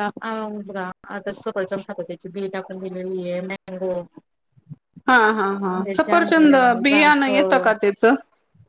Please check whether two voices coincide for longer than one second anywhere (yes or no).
yes